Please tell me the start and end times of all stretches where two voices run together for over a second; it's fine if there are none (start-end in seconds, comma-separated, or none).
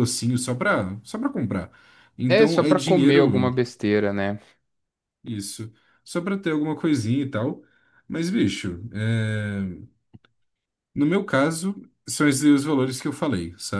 2.3-3.5